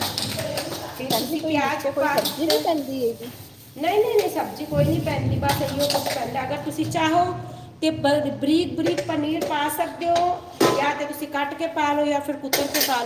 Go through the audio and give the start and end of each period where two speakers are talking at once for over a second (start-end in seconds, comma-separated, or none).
1.0-2.6